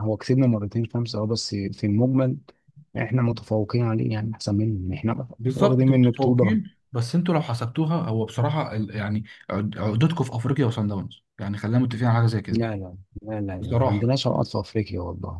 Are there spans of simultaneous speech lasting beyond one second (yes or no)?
yes